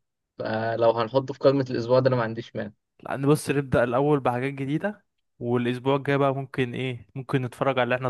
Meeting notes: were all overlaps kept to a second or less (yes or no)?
yes